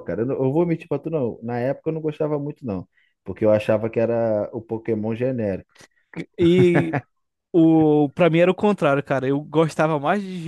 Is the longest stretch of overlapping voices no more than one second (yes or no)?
yes